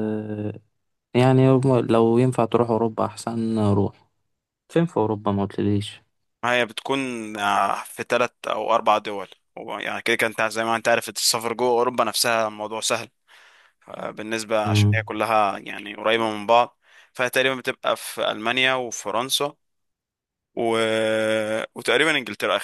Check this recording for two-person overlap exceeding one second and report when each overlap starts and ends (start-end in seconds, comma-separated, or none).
none